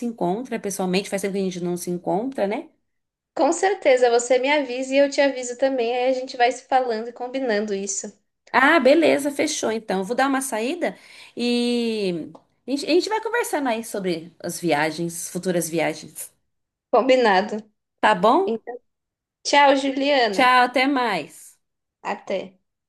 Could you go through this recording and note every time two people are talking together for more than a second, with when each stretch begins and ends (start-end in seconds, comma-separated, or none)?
none